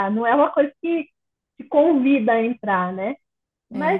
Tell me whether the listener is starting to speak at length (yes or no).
no